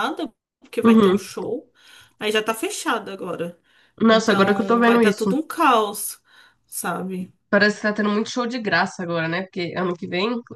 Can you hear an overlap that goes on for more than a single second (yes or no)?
yes